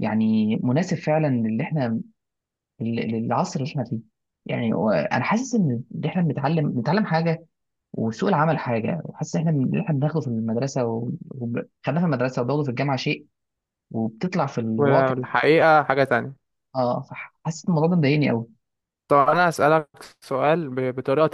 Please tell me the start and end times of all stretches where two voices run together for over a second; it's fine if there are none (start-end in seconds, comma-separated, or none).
none